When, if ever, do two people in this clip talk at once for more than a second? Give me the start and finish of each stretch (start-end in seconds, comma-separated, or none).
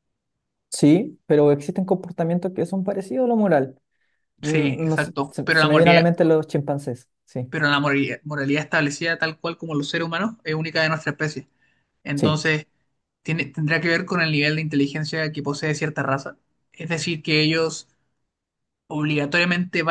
4.4-6.0